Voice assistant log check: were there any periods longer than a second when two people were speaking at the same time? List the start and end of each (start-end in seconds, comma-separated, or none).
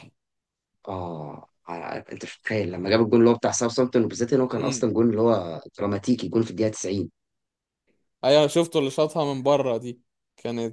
none